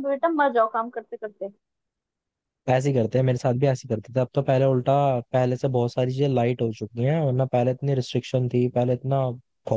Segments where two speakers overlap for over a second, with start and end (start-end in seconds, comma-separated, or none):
none